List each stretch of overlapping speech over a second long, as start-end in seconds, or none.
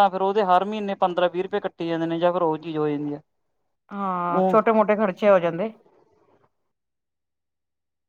none